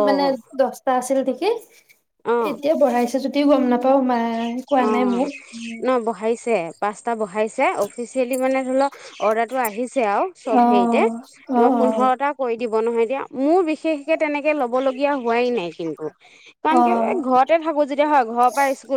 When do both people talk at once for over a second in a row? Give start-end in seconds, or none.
none